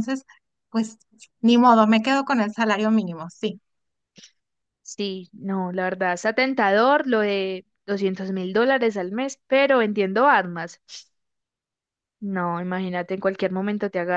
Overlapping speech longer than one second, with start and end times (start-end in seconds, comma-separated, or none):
none